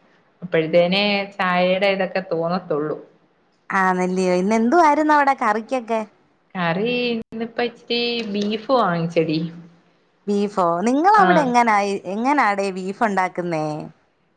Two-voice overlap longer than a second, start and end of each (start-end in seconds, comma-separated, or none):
none